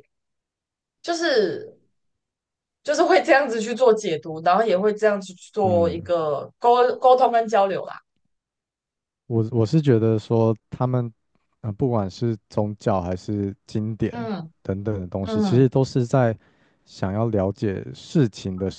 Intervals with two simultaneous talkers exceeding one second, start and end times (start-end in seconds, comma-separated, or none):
none